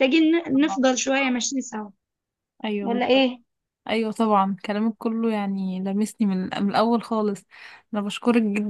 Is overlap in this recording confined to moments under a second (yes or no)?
yes